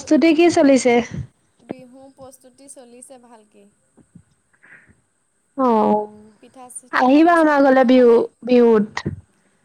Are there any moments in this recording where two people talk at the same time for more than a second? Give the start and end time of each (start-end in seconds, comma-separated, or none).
6.4-8.2